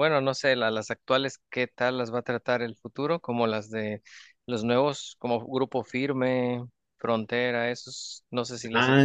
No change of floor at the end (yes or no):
no